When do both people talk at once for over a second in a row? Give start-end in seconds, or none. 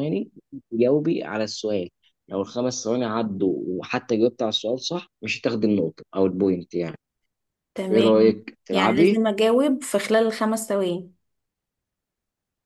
7.9-9.2